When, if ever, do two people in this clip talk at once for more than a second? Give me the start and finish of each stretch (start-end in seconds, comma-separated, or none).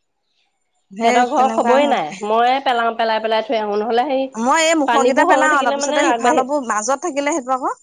4.9-6.4